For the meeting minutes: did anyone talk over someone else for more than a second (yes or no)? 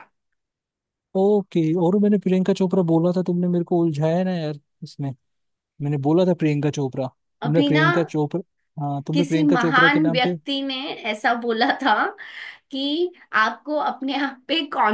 yes